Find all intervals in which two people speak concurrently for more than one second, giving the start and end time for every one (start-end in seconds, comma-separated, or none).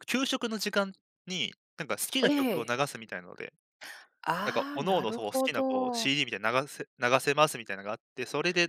4.4-6.1